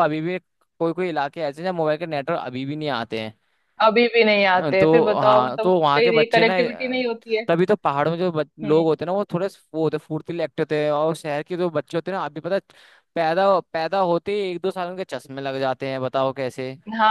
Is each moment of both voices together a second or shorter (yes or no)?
no